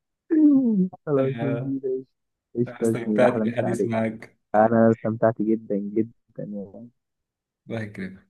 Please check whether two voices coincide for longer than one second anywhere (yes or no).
yes